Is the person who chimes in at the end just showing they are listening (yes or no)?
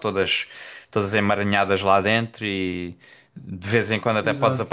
yes